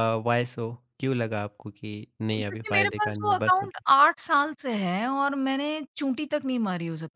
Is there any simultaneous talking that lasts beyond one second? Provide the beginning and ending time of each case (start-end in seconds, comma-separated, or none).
2.3-3.8